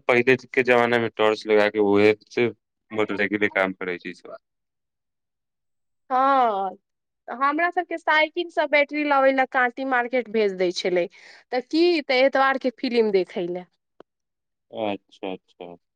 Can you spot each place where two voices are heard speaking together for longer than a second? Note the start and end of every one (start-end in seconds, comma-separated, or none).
none